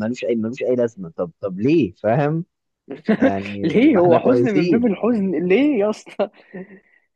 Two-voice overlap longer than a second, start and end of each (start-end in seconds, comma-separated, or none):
3.6-5.0